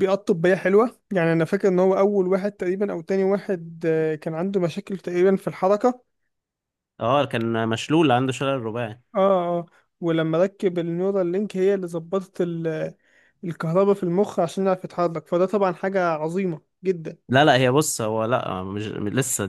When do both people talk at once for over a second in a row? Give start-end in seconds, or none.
none